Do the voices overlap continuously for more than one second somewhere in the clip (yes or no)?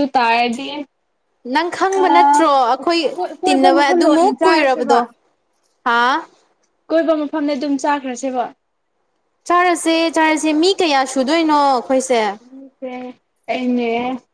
yes